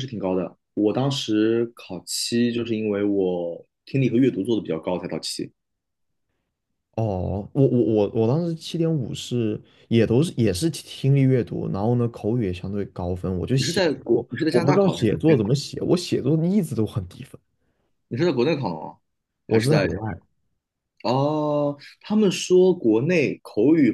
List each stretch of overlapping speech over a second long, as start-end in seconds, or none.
13.6-15.6